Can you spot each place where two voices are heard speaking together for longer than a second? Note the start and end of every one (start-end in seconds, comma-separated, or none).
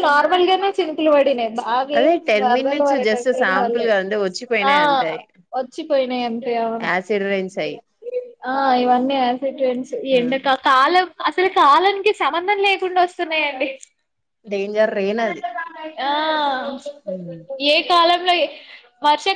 2.0-3.9